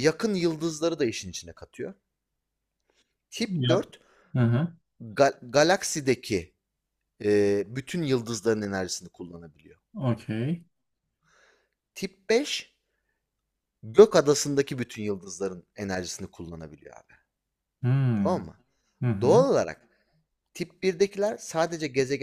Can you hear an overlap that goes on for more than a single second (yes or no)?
no